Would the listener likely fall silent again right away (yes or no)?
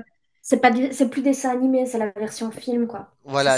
no